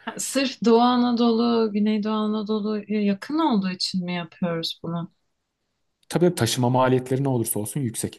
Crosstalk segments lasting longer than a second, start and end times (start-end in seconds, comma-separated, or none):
none